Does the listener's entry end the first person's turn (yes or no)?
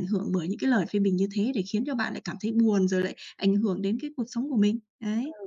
yes